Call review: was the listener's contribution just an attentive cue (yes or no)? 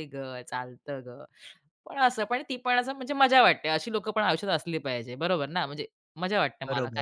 no